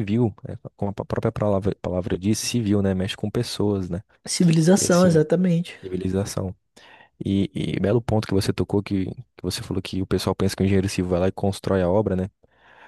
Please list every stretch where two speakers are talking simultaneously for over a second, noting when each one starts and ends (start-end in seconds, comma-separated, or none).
none